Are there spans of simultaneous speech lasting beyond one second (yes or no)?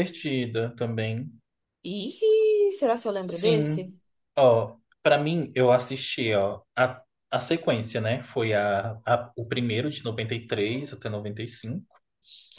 no